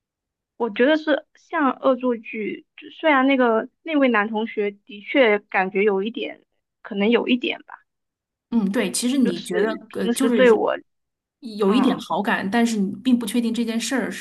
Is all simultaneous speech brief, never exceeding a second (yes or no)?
no